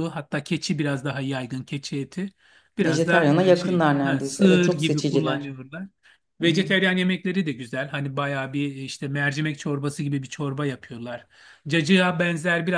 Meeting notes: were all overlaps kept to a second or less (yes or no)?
no